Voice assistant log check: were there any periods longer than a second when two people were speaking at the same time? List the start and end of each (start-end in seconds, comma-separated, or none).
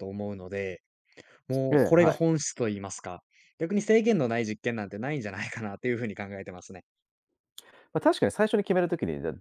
none